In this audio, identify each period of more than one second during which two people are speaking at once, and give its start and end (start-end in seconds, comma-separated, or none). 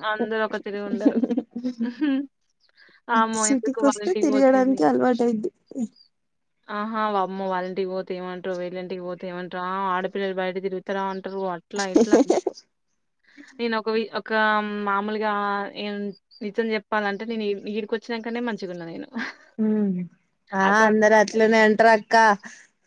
3.5-4.8